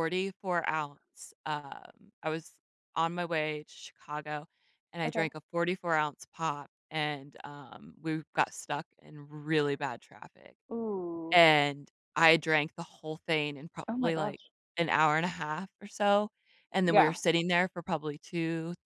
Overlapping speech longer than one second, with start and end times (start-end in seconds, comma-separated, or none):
none